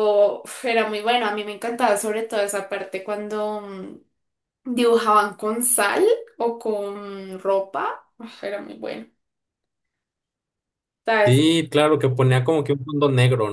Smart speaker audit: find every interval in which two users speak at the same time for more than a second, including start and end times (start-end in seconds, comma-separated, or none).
none